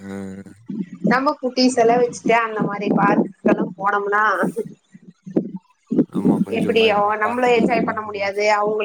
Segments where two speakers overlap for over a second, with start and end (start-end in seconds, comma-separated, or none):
6.6-8.3